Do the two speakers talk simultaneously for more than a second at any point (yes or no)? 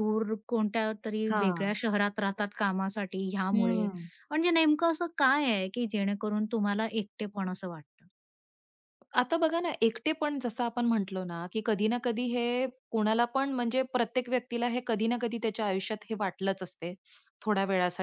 no